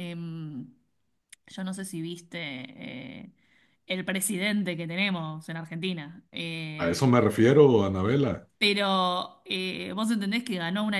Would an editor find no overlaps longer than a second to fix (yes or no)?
yes